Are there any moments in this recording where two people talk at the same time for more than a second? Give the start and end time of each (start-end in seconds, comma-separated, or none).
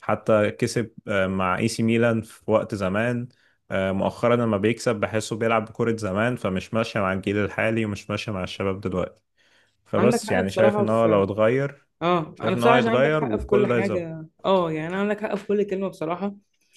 10.0-11.2, 12.3-14.1